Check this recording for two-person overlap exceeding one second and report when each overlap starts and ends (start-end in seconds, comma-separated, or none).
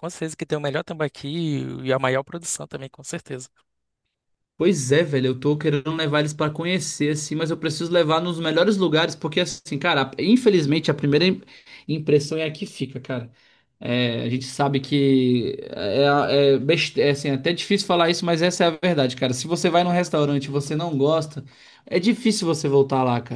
none